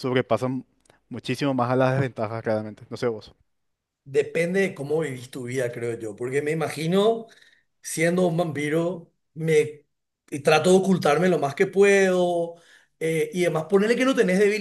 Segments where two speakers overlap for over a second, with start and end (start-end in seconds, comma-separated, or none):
none